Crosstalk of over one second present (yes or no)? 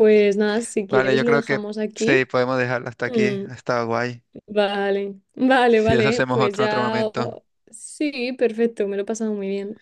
yes